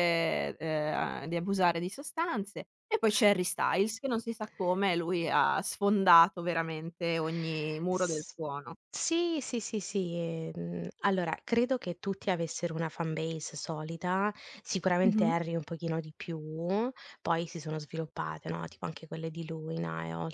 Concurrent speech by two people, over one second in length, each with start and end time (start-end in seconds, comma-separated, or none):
none